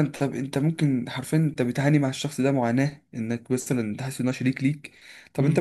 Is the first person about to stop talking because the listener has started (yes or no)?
no